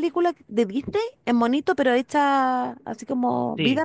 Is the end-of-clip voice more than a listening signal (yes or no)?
yes